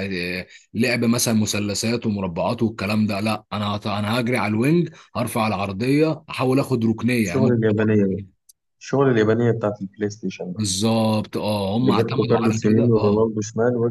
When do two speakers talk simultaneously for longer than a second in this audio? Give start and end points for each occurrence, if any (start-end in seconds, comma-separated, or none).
11.8-13.3